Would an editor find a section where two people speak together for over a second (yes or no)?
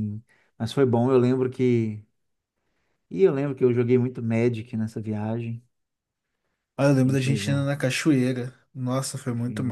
no